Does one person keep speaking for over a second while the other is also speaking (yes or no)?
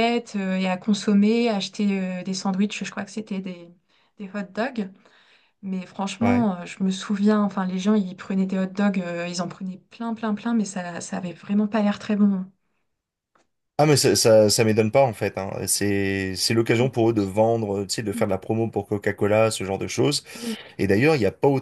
no